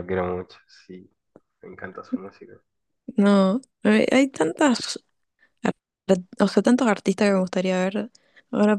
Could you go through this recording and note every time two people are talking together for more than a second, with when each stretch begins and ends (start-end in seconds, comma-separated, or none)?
none